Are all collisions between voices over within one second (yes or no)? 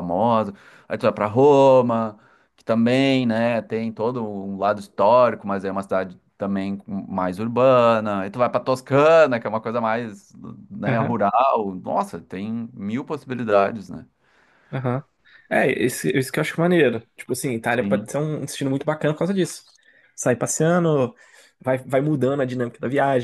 yes